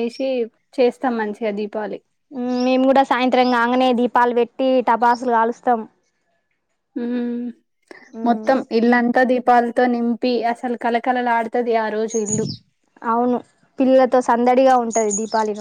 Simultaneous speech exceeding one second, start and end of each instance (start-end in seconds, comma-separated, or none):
none